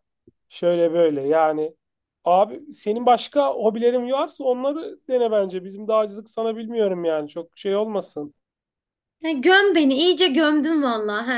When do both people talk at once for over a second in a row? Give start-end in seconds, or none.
none